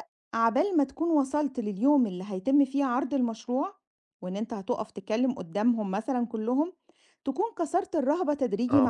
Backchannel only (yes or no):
no